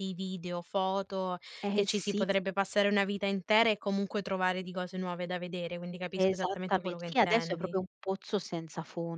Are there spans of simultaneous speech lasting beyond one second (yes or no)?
yes